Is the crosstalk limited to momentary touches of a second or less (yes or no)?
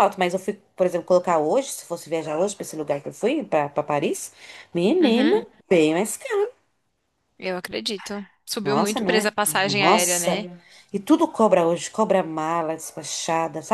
no